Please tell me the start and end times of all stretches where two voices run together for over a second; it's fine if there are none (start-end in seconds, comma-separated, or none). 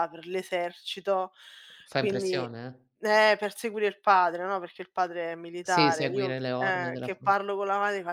5.6-7.3